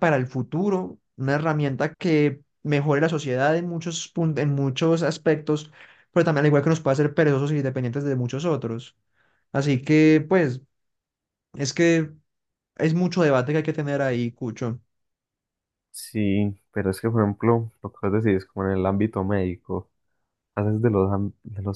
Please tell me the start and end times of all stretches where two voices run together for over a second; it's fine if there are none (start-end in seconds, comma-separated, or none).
none